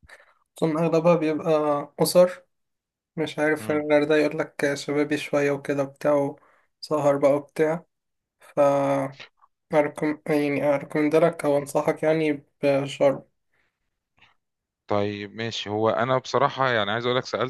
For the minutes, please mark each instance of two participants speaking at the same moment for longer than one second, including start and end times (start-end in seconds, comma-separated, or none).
none